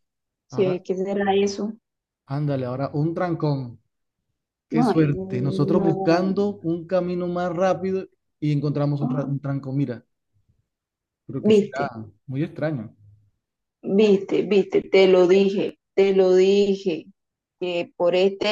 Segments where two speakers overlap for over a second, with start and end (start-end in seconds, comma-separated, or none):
4.7-6.3